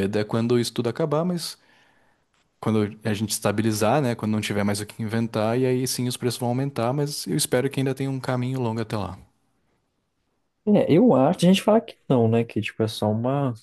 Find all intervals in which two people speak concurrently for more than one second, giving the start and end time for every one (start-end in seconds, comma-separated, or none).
none